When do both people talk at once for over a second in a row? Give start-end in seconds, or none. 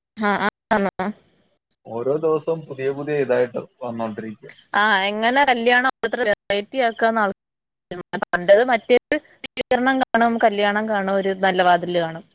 none